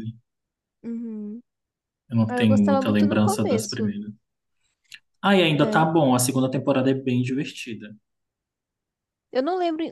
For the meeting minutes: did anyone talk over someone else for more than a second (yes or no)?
yes